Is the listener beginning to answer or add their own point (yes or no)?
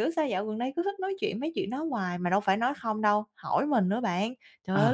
no